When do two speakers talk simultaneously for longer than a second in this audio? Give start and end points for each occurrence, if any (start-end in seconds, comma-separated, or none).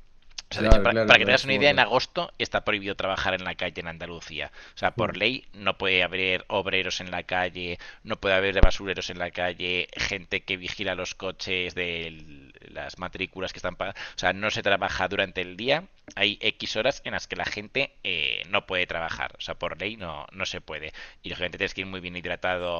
0.5-1.9